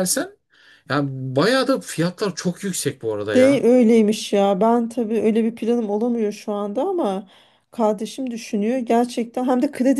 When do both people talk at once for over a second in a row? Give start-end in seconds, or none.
none